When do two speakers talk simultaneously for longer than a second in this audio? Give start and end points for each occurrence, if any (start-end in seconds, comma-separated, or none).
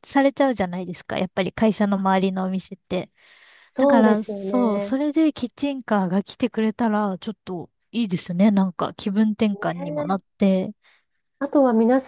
3.8-5.0